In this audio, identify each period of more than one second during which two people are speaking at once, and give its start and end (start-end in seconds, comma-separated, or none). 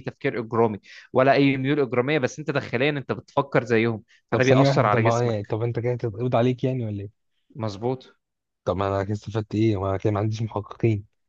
4.3-5.6